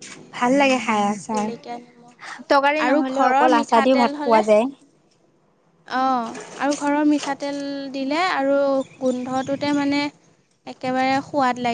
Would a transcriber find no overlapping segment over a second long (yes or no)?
no